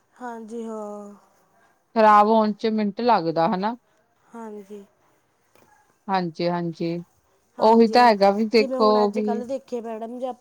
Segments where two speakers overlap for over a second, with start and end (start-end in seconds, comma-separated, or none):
none